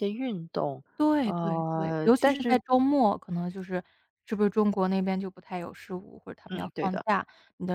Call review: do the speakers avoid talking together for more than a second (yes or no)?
no